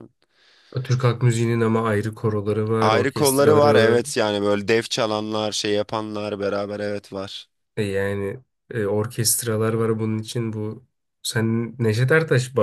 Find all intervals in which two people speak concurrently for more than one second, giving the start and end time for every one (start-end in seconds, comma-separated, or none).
2.8-4.0